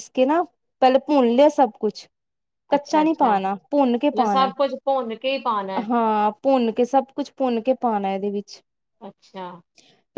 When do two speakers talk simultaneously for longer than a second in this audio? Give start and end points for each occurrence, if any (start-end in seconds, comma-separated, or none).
none